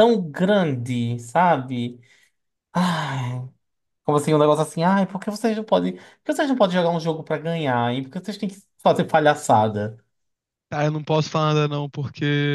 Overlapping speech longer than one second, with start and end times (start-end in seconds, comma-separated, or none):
none